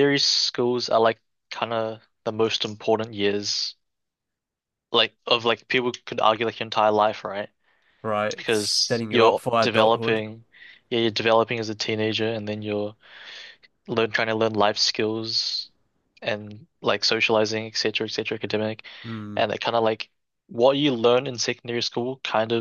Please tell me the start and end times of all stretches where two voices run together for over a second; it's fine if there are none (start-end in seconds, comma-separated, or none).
8.3-10.2